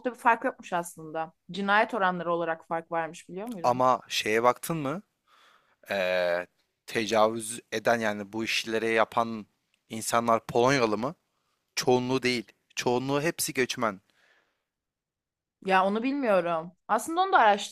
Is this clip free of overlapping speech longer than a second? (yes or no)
yes